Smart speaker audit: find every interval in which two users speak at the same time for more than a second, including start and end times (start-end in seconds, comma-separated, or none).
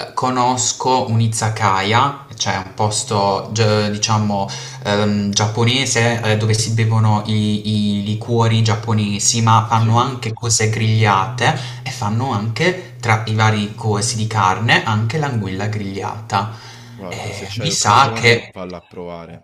17.1-18.5